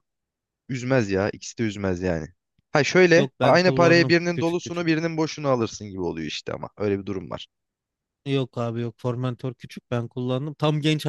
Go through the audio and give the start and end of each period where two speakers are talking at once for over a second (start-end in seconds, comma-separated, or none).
3.1-4.9